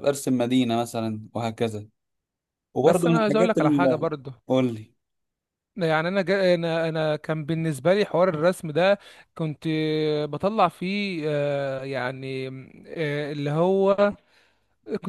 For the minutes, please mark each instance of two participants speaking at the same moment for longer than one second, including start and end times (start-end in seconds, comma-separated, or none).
2.8-4.1